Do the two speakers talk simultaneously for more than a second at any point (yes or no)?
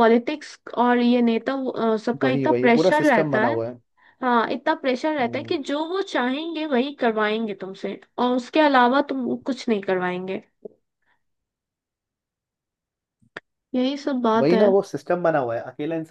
yes